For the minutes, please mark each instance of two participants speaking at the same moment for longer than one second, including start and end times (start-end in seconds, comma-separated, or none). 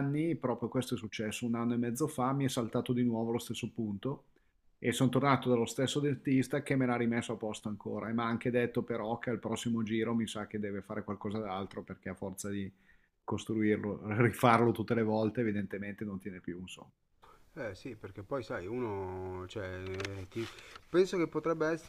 none